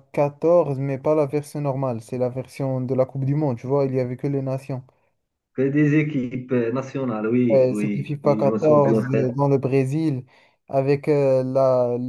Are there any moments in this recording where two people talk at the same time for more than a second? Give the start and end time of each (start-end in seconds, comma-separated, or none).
7.5-9.3